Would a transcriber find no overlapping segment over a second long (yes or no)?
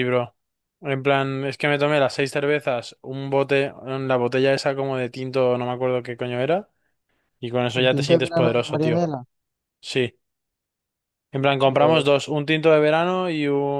no